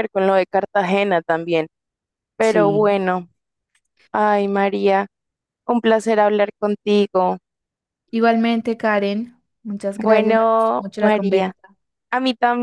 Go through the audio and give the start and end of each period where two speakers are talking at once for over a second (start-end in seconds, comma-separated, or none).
10.0-11.5